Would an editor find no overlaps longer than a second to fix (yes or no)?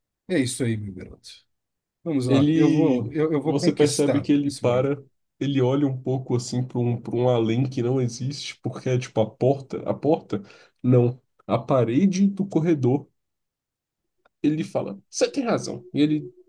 no